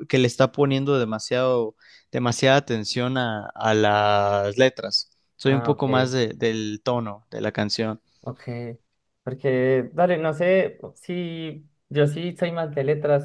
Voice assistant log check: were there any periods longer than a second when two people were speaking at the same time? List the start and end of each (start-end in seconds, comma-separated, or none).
none